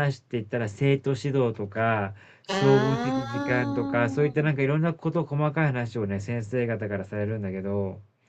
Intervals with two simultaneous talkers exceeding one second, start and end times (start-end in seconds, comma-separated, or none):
2.5-4.5